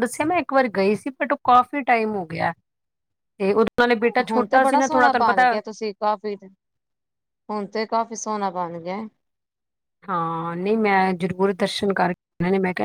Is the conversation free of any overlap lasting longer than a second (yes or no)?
no